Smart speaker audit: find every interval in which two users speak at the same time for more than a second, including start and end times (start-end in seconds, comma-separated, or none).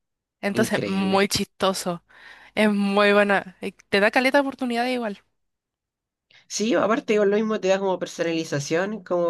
none